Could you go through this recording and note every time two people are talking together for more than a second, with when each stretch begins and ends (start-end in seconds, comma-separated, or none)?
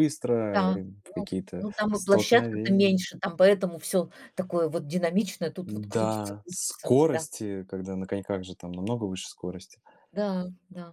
0.5-3.0, 5.6-7.2